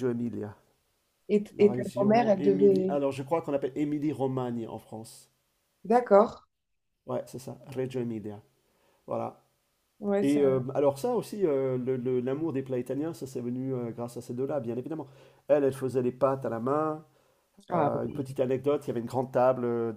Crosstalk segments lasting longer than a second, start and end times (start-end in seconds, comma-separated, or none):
1.6-3.0